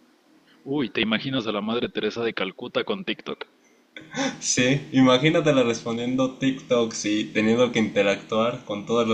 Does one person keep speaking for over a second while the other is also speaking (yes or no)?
no